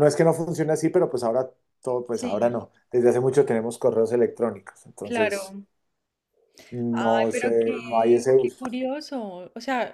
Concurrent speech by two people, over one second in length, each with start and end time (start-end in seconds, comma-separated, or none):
6.9-8.6